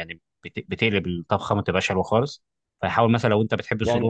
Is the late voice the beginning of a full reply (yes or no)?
yes